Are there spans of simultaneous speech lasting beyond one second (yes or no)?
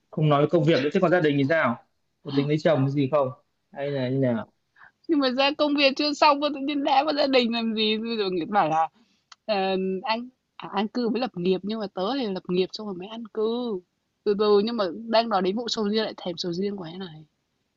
no